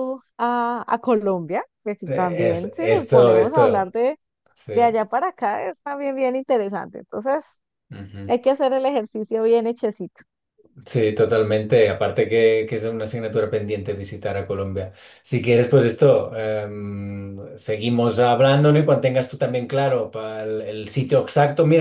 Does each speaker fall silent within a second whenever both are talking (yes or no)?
no